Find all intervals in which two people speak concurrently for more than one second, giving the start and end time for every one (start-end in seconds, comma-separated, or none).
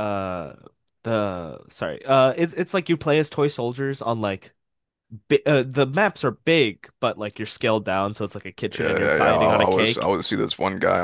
8.8-10.0